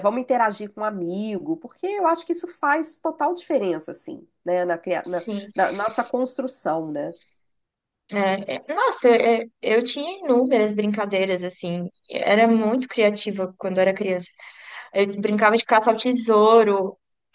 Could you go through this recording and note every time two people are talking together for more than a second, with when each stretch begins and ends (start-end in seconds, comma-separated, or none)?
none